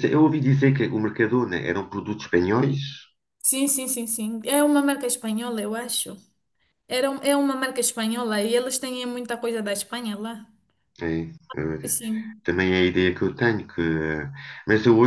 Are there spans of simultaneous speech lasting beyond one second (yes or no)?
no